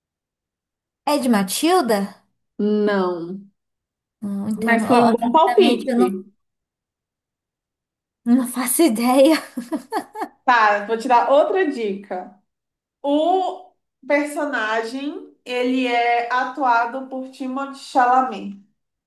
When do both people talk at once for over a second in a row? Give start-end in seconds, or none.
4.6-6.1